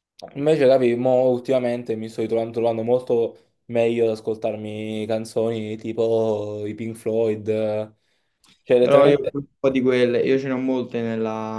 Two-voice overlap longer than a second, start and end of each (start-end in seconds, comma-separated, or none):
none